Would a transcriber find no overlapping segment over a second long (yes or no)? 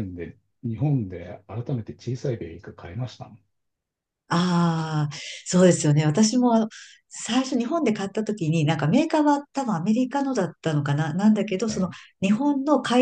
yes